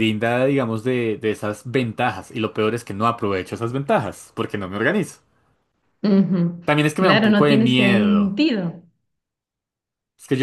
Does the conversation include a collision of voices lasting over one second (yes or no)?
yes